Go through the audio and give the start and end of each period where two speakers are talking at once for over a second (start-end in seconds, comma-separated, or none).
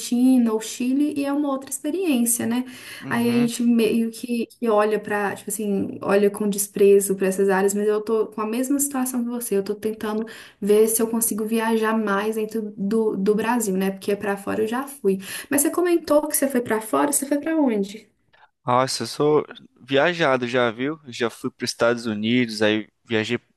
none